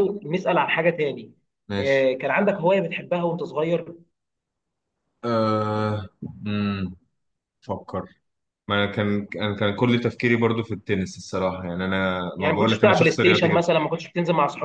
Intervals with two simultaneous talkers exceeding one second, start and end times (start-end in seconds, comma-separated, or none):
12.4-13.7